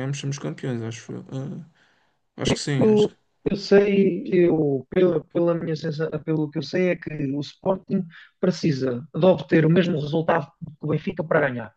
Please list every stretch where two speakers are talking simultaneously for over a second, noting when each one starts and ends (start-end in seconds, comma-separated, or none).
none